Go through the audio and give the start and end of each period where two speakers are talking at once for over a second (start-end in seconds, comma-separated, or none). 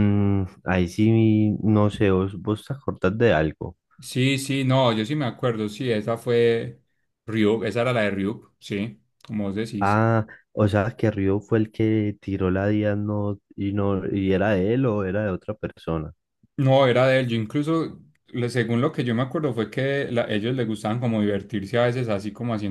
none